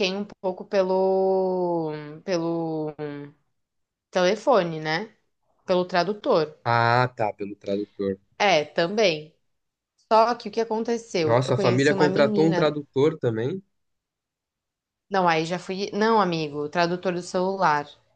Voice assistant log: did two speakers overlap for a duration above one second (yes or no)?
yes